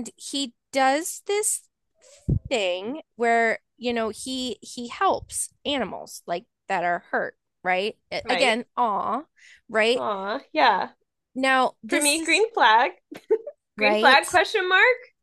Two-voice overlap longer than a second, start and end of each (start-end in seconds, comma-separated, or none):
none